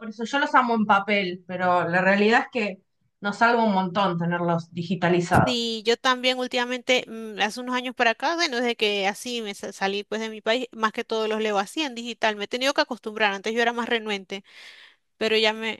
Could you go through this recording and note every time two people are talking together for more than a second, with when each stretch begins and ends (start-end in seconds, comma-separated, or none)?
none